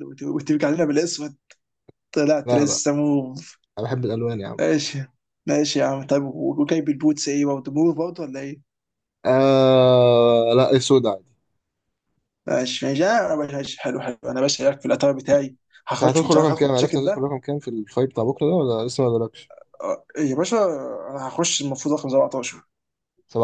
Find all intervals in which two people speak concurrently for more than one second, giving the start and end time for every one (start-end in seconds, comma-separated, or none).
15.9-17.3